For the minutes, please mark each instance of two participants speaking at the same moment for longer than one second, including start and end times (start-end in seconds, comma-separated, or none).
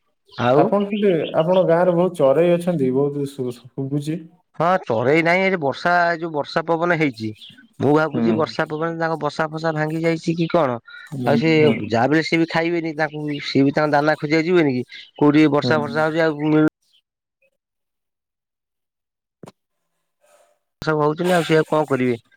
none